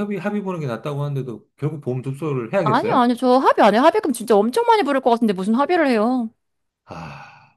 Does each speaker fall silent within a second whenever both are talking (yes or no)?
yes